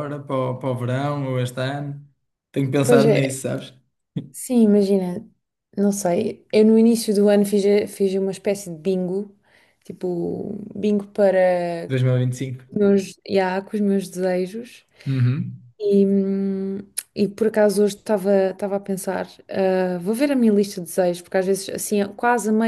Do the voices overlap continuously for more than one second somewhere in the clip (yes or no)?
no